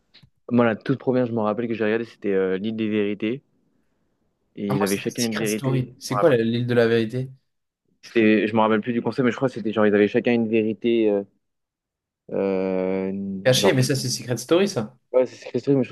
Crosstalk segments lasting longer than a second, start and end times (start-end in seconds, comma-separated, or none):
4.7-6.4